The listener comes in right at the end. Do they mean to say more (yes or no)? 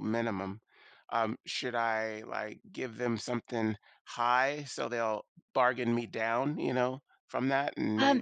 yes